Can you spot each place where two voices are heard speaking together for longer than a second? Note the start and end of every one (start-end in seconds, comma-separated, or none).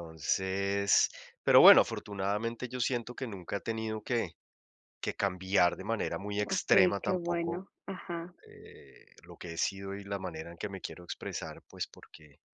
6.4-7.6